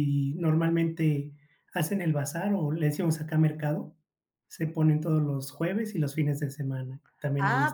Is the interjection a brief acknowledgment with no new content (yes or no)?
no